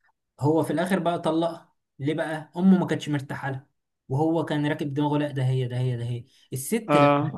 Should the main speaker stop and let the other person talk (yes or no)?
no